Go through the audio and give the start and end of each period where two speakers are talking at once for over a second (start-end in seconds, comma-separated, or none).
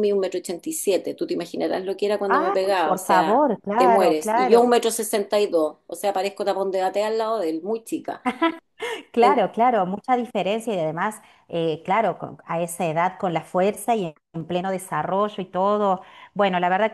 2.3-4.7